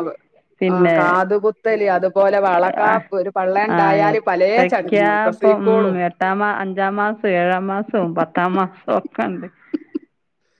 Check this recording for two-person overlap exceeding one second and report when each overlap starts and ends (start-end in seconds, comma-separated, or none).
3.8-6.0